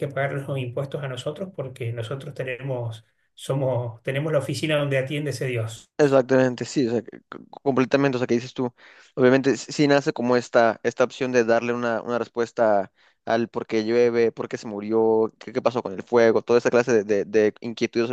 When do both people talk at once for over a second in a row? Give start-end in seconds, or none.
none